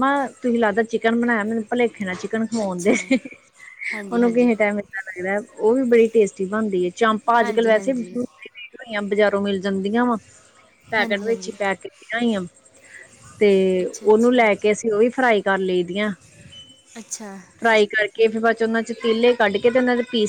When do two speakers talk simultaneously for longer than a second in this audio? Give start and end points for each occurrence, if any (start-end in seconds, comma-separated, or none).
none